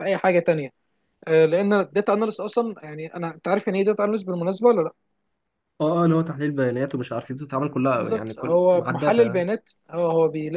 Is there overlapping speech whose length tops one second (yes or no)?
yes